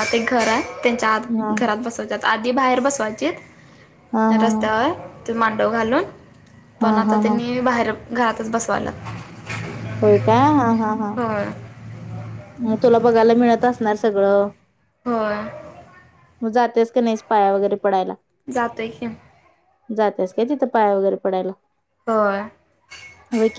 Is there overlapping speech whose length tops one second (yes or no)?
no